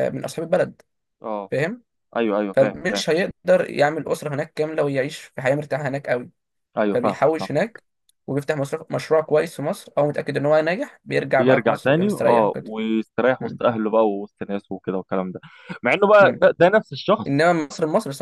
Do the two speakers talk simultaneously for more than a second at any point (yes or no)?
yes